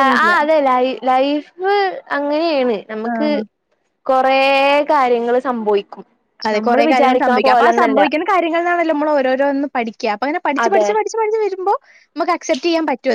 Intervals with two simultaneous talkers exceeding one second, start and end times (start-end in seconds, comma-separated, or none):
6.6-8.0